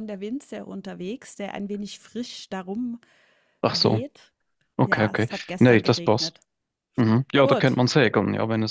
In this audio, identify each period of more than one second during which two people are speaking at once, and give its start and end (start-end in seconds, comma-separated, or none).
4.8-6.3